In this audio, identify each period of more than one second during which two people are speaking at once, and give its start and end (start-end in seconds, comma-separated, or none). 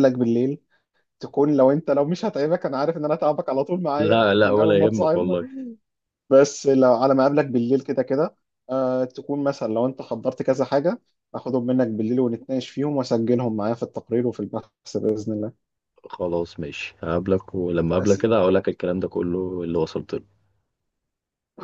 4.0-5.4